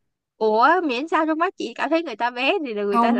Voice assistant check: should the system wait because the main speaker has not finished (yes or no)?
no